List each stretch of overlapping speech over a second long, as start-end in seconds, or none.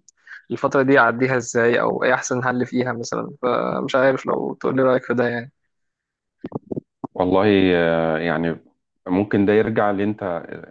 none